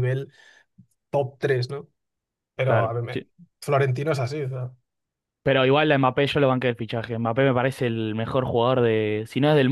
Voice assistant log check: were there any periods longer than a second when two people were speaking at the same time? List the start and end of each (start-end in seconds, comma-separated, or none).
none